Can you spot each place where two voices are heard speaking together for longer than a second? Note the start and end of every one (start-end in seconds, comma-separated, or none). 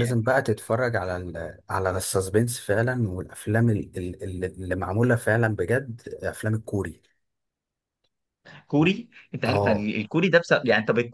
none